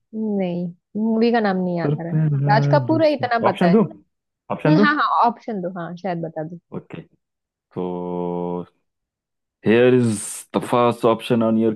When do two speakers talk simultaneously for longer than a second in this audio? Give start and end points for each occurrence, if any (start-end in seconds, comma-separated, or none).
1.9-3.8